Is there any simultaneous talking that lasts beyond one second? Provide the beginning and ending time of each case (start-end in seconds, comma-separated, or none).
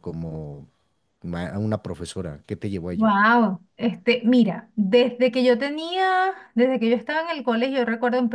none